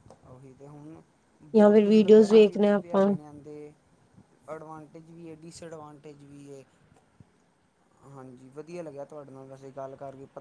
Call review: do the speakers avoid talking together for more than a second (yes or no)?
no